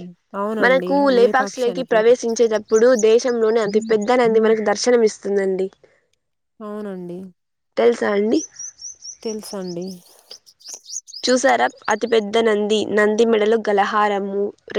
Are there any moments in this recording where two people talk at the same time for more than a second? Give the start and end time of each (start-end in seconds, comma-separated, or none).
0.6-2.1